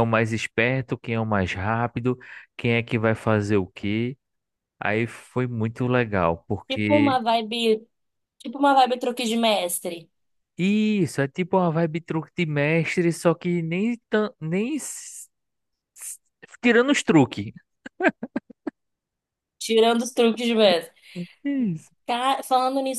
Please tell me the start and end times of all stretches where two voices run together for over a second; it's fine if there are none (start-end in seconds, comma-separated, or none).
none